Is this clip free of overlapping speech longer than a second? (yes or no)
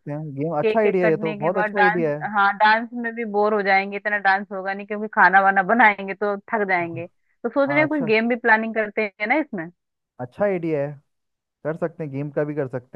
no